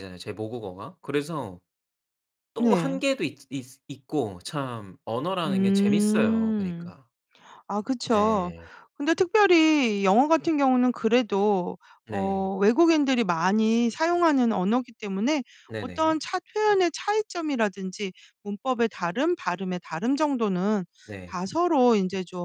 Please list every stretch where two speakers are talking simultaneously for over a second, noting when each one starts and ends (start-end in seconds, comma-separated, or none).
5.5-6.9